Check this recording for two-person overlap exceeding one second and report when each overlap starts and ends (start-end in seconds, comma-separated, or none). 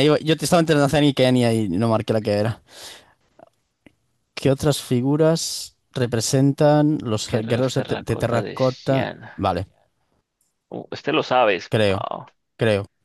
7.3-9.3